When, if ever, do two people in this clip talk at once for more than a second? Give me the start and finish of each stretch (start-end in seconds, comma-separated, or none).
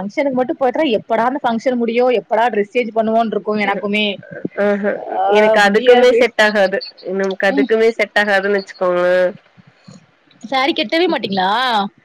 none